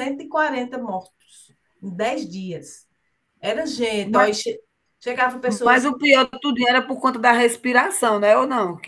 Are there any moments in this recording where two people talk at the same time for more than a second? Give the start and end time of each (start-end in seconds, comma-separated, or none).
none